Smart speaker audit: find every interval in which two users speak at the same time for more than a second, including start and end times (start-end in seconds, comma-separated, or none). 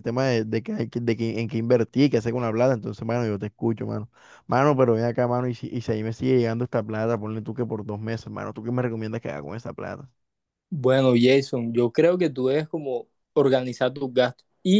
none